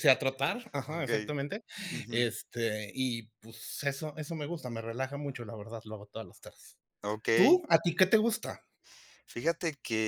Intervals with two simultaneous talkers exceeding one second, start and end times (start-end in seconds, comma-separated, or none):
none